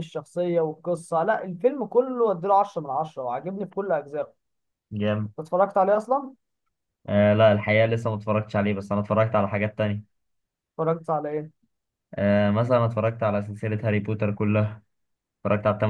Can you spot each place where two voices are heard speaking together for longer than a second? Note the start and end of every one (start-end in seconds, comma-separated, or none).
none